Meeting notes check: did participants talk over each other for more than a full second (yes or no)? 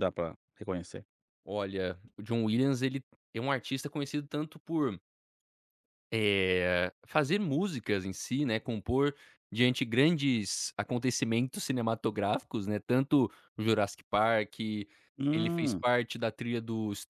no